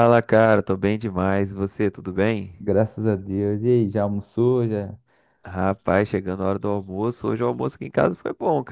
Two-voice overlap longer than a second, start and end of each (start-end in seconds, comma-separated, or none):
none